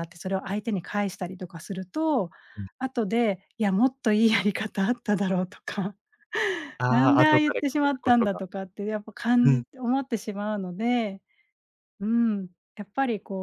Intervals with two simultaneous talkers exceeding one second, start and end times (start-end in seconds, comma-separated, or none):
6.9-8.4